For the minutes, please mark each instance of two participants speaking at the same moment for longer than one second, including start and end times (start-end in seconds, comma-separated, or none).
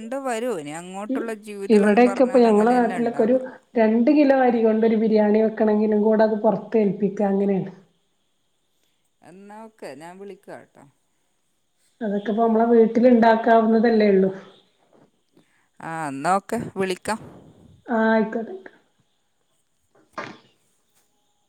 1.8-3.4